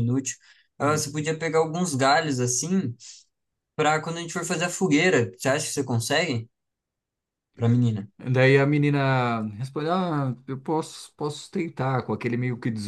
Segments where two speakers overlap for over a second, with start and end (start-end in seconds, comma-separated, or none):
none